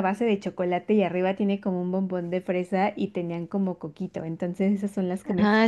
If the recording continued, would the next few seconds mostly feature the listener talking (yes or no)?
yes